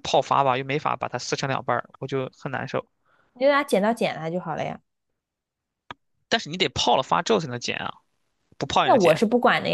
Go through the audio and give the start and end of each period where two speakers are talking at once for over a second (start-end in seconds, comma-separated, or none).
none